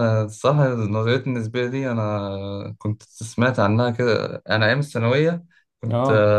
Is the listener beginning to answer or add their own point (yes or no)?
no